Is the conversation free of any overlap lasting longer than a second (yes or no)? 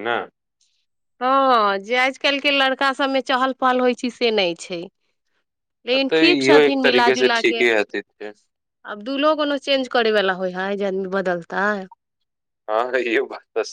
no